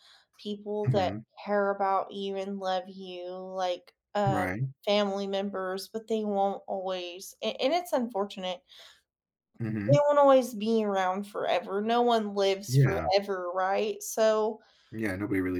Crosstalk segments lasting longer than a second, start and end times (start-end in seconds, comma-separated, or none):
none